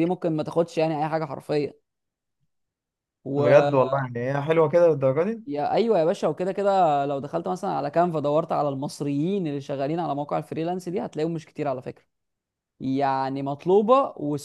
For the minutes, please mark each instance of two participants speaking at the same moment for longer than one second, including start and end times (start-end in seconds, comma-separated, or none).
none